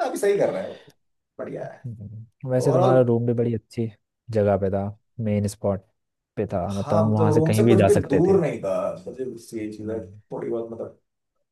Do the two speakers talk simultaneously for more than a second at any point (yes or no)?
yes